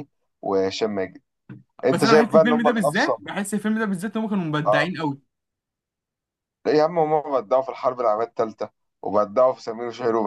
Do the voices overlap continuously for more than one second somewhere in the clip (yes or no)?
yes